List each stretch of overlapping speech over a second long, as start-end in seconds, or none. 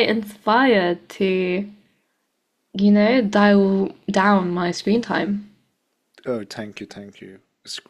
none